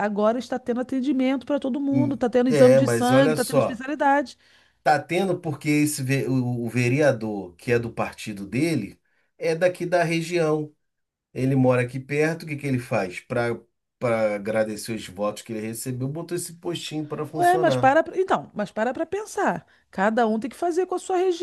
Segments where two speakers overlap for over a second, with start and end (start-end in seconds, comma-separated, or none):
1.9-3.8